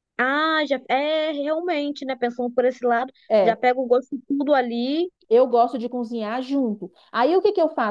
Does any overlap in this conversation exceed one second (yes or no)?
no